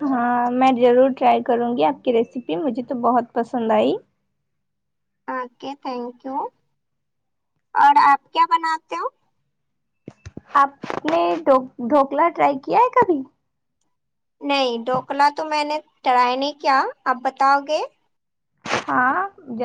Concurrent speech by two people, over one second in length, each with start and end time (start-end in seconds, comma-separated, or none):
none